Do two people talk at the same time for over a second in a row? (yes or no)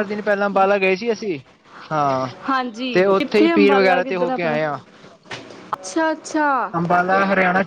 yes